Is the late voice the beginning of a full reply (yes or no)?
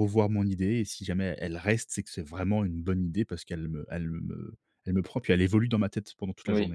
yes